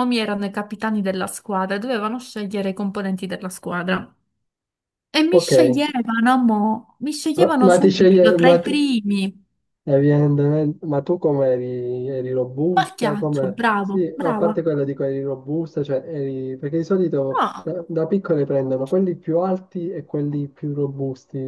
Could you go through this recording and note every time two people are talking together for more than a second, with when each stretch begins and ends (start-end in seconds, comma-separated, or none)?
7.4-8.7, 12.7-14.6